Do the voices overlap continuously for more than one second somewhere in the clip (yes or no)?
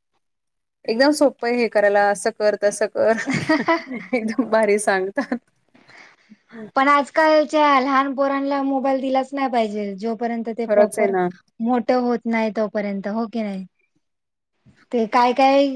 no